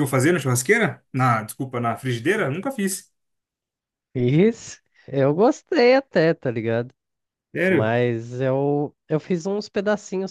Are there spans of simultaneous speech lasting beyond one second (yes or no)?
no